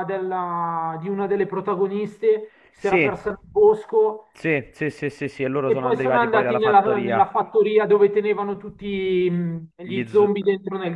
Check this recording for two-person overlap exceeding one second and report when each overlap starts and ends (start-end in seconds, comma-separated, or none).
5.6-7.3